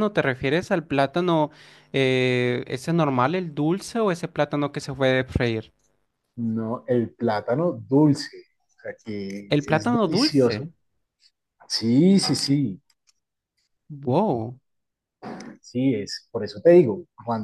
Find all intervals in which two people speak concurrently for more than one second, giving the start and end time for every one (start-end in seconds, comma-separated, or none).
9.5-10.7